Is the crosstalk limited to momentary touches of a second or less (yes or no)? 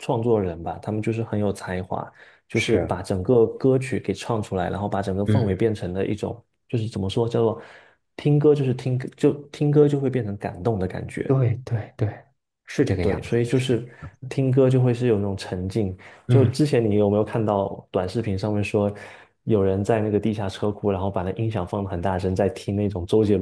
yes